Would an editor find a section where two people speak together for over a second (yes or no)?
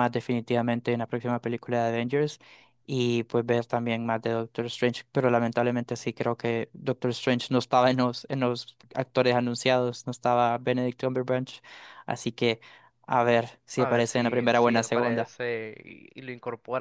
yes